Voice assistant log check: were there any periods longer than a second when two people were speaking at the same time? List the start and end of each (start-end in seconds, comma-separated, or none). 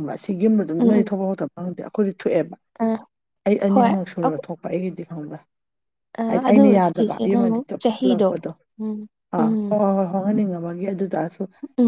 6.3-8.3